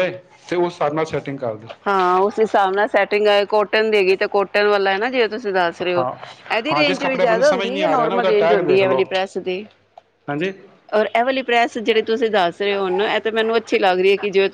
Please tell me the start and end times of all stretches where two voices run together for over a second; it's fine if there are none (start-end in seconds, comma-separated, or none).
6.7-9.0